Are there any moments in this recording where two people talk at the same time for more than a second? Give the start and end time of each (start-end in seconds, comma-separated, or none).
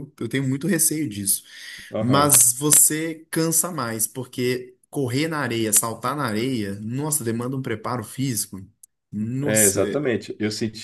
none